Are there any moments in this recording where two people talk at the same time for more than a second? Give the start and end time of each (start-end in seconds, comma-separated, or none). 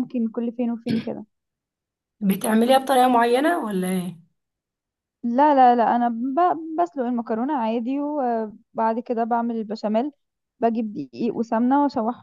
none